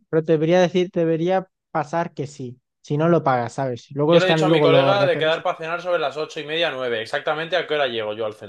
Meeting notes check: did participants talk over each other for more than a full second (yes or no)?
yes